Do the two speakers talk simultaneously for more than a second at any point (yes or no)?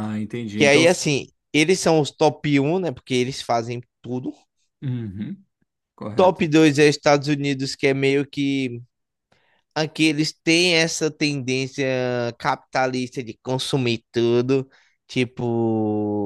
no